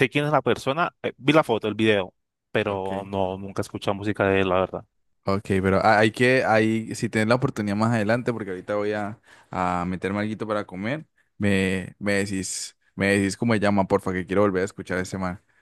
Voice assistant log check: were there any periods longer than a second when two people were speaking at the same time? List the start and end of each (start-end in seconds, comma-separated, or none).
none